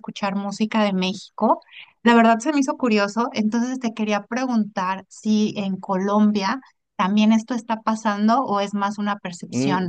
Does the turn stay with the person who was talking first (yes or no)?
no